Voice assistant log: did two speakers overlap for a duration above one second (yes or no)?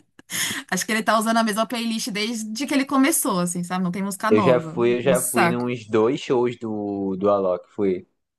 yes